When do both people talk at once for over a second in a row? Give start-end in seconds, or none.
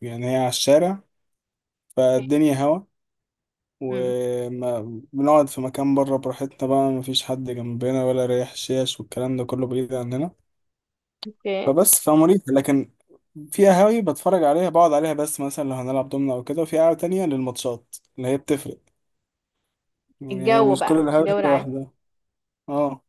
20.3-21.7